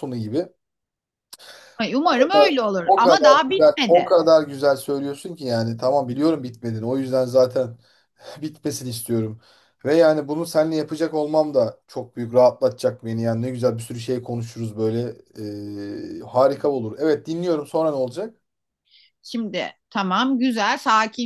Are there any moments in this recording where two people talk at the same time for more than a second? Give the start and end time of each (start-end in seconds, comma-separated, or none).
2.0-4.1